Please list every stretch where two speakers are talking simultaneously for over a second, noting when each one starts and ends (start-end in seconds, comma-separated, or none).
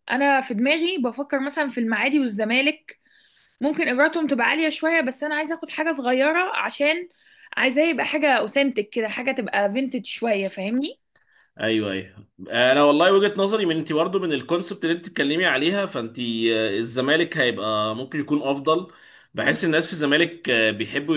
none